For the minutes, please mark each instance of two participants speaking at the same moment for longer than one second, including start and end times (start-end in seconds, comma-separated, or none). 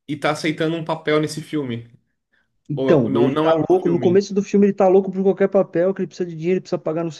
2.7-4.2